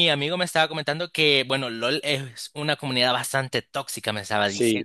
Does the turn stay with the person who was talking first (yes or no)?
no